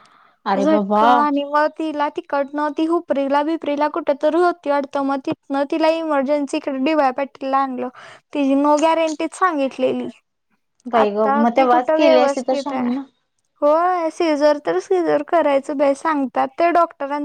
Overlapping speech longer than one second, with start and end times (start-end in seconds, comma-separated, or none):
11.0-12.8